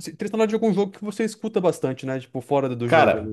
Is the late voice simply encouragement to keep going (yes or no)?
no